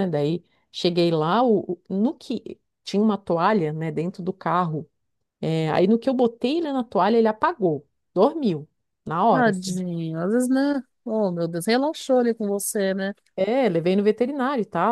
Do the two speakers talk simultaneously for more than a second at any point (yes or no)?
no